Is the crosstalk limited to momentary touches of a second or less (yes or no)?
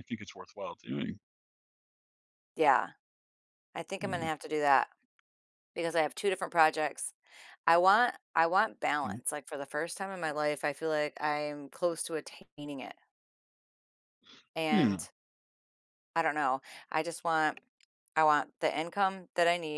yes